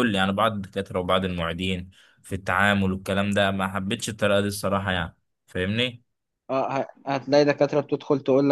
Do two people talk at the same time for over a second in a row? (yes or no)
no